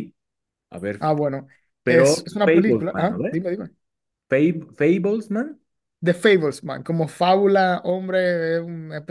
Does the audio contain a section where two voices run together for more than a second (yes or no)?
yes